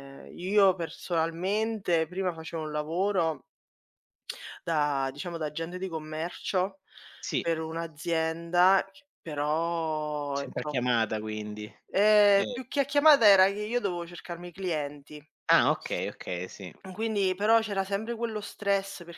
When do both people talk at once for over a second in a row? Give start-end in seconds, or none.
none